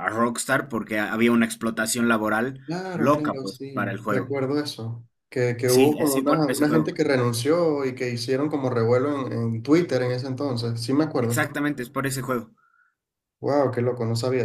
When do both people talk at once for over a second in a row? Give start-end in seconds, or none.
2.6-4.3, 5.7-6.9